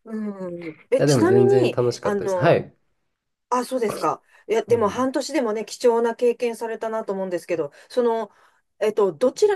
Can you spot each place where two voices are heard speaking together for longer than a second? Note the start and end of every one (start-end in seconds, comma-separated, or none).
1.0-2.6